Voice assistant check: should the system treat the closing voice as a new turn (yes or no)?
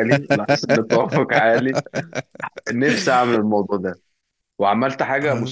no